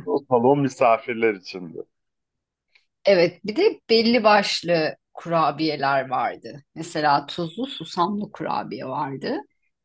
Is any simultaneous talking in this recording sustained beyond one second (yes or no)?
no